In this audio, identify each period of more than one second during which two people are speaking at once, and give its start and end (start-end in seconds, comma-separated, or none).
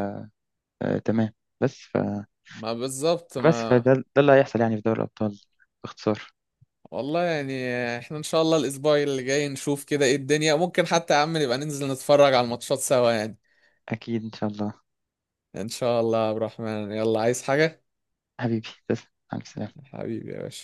none